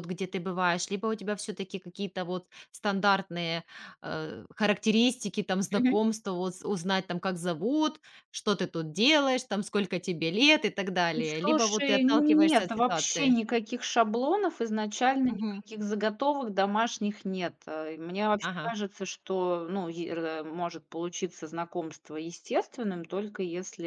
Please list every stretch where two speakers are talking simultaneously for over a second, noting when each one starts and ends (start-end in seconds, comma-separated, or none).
11.4-13.3